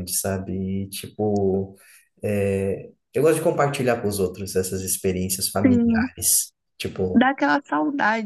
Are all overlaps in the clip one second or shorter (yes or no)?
yes